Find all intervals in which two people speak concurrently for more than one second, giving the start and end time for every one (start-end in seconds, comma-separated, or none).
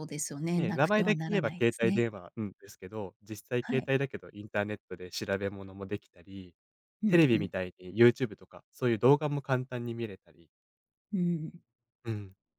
0.6-2.1